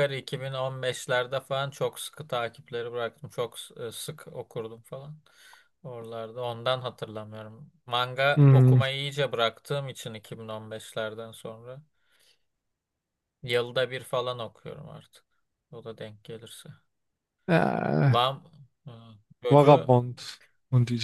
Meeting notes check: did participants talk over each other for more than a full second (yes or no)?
no